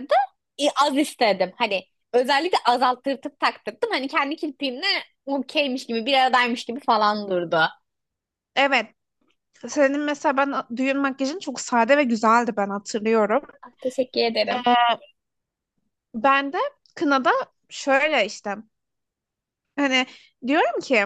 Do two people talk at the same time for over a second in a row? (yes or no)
no